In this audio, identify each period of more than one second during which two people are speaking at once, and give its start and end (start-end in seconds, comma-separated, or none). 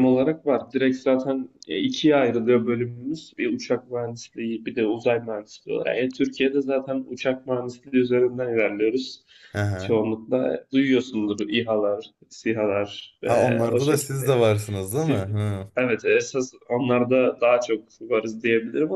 13.2-15.2